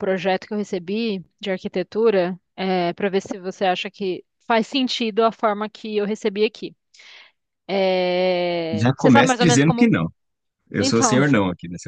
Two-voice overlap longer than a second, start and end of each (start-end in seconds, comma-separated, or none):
8.7-9.9